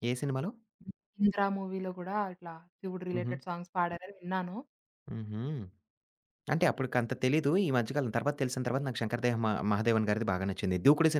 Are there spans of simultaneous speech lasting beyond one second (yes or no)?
no